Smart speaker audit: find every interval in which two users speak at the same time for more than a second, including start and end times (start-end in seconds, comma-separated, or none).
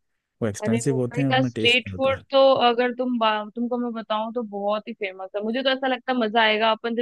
0.6-2.2